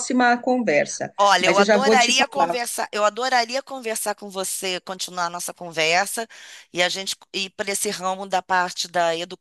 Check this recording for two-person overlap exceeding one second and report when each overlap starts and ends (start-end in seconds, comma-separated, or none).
1.2-2.6